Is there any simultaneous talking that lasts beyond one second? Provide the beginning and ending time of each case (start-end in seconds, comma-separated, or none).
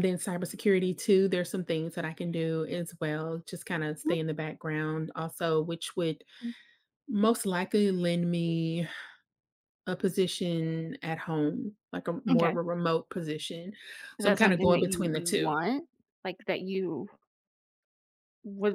14.2-15.6